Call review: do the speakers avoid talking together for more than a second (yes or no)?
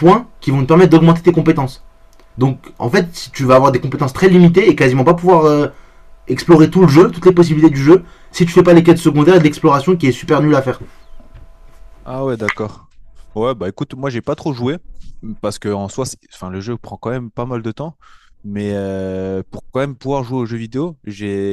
yes